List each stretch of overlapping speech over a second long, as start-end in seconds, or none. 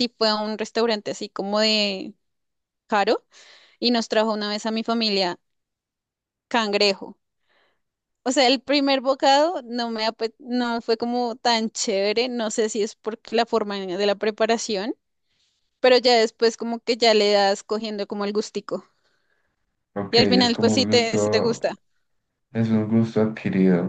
20.1-21.6